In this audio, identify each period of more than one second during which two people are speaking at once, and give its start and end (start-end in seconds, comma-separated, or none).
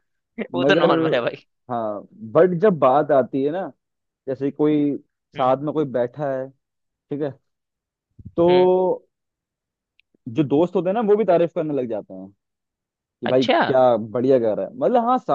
none